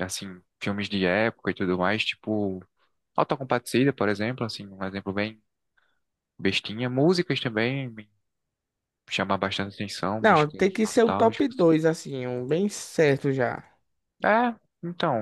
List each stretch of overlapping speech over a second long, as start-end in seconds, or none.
10.2-11.7